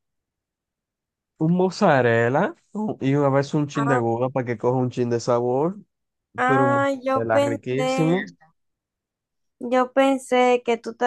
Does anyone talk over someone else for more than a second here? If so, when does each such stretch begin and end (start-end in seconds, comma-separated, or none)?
6.5-8.2